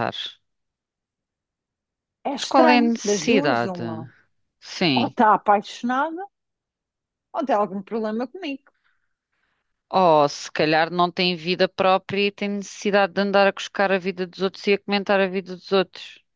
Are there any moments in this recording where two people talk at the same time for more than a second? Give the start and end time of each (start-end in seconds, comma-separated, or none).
2.3-3.8